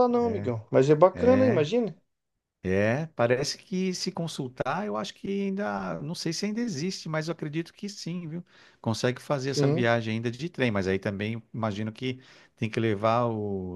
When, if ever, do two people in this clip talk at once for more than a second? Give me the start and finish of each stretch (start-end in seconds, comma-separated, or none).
none